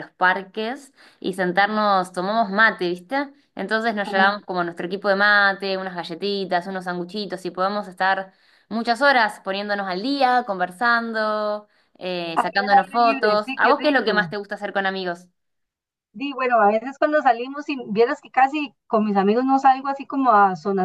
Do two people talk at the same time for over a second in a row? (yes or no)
yes